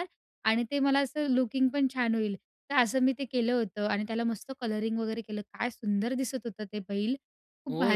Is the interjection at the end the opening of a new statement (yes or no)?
yes